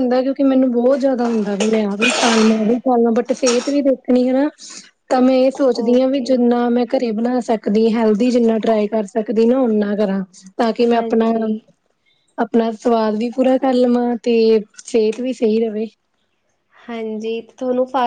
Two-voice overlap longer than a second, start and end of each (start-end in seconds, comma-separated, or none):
none